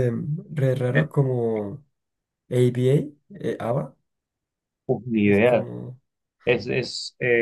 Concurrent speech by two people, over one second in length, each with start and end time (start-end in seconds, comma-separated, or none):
none